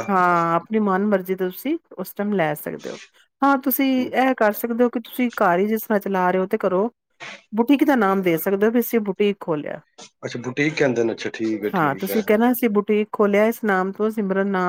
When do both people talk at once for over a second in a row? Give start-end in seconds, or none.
none